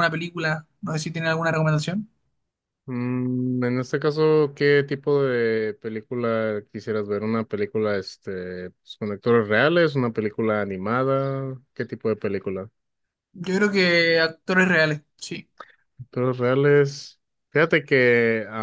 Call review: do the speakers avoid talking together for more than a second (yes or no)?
yes